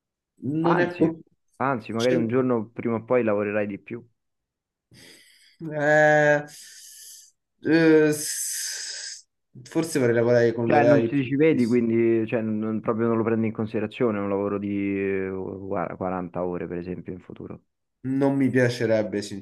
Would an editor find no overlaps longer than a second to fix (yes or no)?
no